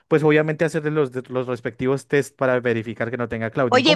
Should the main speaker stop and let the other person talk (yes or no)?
yes